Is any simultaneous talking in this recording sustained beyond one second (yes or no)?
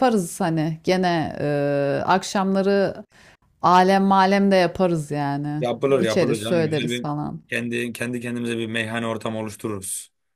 yes